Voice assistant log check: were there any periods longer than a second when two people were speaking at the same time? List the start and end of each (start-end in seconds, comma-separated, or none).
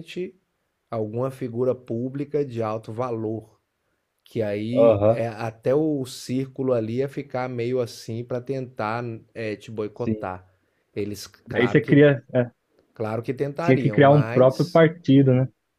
13.6-14.8